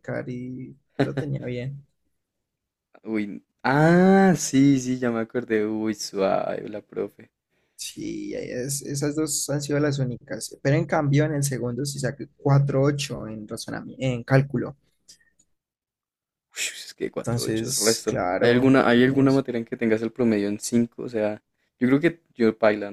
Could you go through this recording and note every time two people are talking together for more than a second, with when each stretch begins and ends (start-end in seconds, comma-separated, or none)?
17.2-19.4